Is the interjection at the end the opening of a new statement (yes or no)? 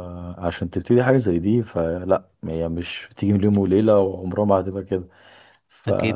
no